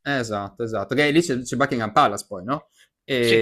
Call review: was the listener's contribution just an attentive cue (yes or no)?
yes